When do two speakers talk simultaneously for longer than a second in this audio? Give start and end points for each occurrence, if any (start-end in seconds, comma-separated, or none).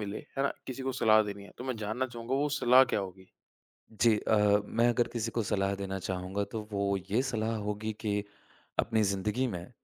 none